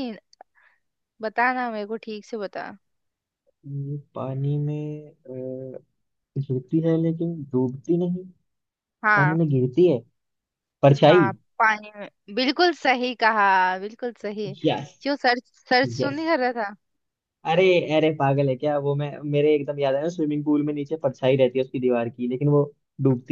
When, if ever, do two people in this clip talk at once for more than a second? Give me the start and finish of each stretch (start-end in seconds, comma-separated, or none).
none